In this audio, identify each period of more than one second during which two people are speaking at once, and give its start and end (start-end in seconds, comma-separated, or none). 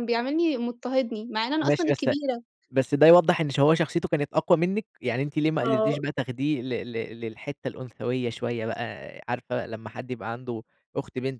none